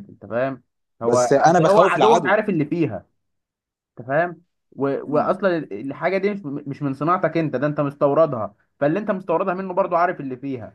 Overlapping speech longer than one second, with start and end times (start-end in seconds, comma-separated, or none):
1.0-2.4